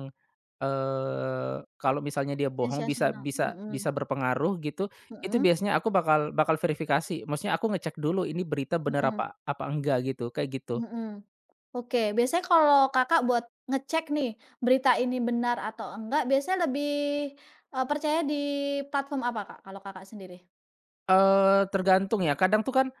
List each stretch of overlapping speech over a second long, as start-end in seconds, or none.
2.6-3.9